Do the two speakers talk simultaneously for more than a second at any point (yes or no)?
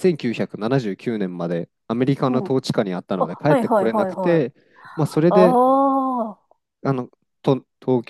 yes